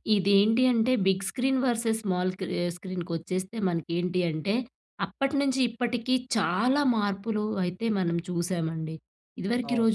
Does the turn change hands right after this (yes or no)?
no